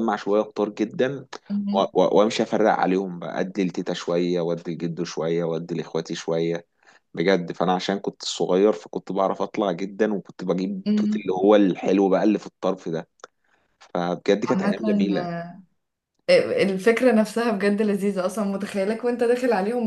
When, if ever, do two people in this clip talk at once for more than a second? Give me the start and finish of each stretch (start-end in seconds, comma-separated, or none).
none